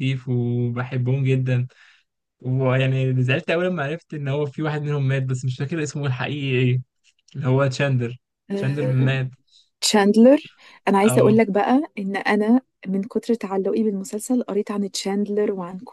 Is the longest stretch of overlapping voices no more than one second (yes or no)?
yes